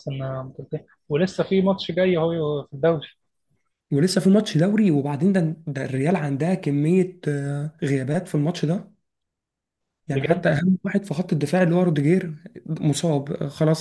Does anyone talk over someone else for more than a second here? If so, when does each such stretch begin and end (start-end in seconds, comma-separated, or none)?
none